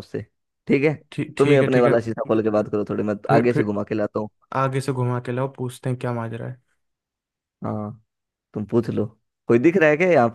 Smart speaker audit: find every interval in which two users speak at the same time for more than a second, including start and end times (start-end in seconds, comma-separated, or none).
none